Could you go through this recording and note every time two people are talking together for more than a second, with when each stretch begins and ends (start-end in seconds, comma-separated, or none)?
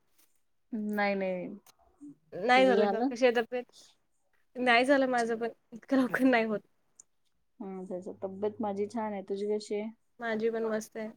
none